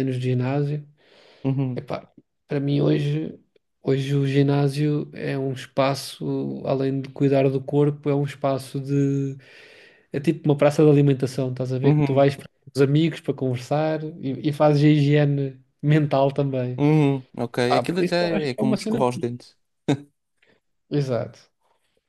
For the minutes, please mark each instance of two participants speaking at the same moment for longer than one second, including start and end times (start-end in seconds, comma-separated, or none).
17.7-19.0